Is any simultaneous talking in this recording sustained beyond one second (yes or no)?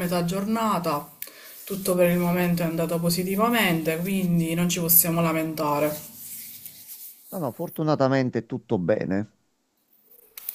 no